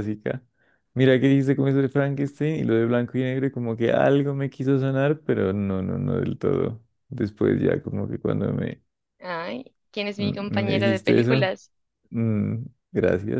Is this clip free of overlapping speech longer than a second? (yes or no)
no